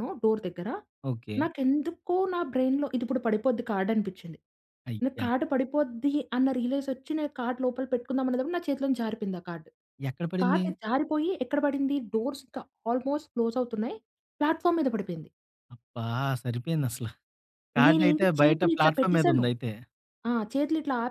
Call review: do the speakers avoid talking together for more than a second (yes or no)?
no